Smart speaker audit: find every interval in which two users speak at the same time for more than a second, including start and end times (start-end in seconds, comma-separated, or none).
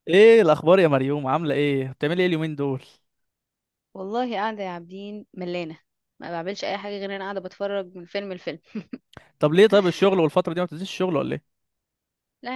none